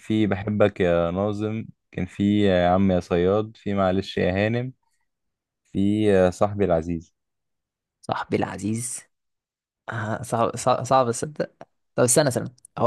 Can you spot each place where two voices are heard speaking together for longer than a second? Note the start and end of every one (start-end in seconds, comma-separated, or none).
none